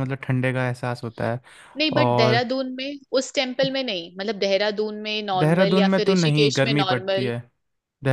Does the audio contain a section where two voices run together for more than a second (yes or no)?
yes